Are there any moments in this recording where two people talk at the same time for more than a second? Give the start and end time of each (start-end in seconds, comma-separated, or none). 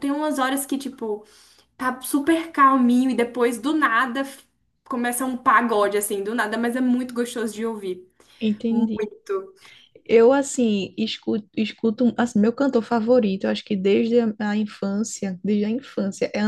none